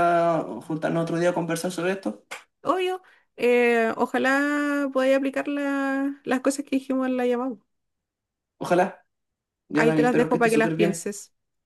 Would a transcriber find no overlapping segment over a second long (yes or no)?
no